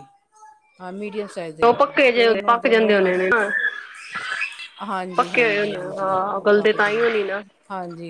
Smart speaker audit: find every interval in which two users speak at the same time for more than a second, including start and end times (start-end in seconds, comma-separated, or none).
5.2-7.0